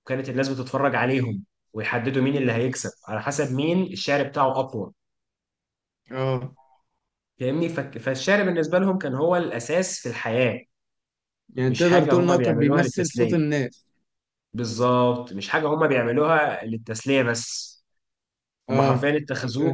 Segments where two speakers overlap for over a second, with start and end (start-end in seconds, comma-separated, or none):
11.7-13.4